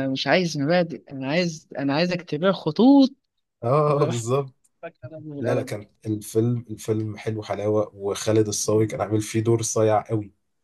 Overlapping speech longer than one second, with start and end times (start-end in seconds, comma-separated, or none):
none